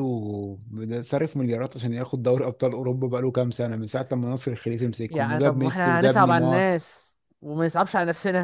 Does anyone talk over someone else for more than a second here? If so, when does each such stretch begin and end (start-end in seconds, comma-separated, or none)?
5.1-6.6